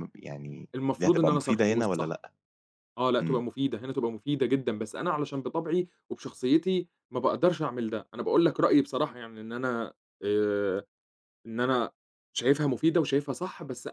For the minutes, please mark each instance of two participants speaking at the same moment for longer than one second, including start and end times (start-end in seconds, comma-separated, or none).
0.7-2.2